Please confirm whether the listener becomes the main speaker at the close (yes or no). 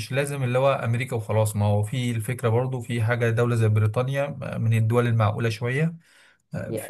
yes